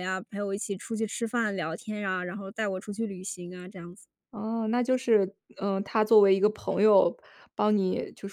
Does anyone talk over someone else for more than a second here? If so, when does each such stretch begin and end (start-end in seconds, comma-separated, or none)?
none